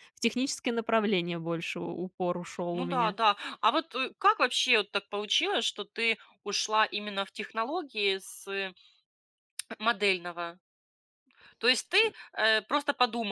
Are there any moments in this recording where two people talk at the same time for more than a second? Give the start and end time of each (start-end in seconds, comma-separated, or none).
none